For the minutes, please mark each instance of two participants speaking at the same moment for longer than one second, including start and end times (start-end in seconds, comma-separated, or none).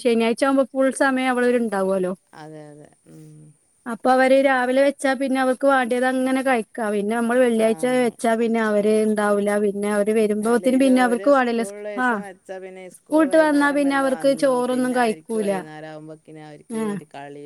13.0-15.5